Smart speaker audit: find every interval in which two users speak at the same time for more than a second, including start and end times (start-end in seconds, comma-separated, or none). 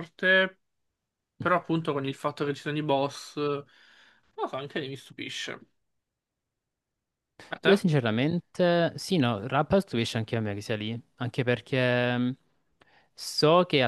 none